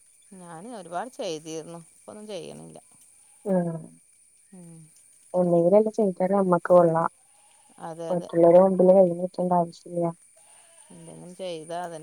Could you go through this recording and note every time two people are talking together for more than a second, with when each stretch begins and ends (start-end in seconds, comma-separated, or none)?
none